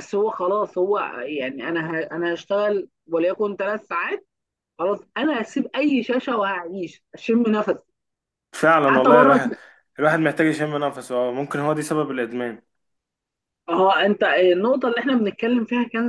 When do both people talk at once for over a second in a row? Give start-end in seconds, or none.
none